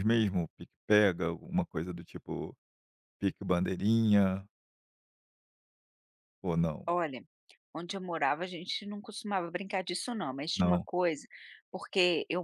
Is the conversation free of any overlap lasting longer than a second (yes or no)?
yes